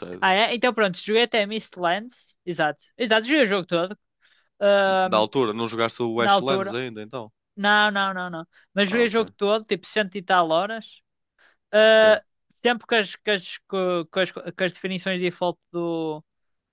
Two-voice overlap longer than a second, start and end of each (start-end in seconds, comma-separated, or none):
none